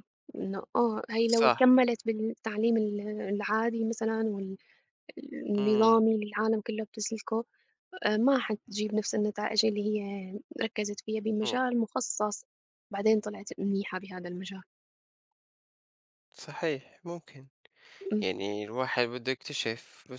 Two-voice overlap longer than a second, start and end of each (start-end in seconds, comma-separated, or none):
none